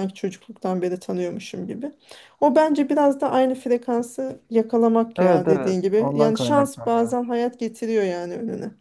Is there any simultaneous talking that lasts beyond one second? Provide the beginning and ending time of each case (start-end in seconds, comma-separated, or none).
5.2-7.1